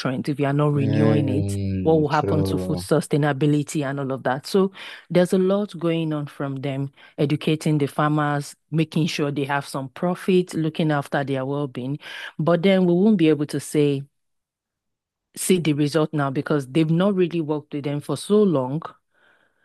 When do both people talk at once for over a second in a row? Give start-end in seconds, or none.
0.7-2.8